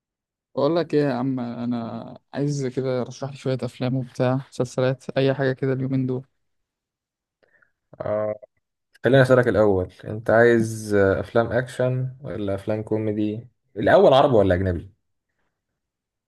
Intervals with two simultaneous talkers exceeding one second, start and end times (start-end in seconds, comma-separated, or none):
none